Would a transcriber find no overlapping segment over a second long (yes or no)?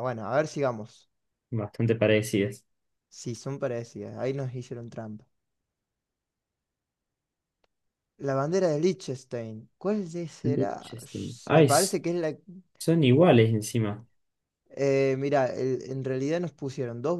no